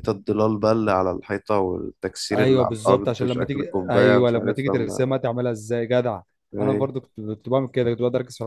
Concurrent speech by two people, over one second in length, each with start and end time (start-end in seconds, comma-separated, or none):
2.3-5.1